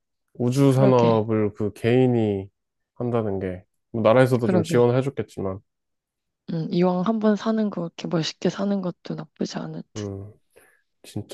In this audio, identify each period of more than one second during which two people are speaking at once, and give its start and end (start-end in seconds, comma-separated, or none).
none